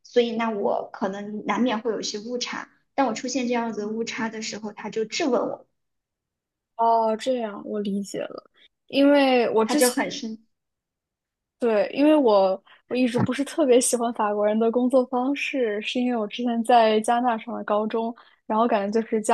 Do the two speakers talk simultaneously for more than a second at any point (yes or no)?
no